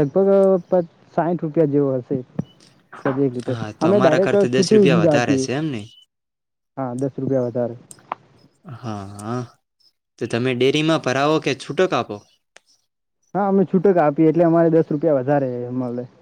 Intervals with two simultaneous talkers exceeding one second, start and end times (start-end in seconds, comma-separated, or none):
3.5-5.5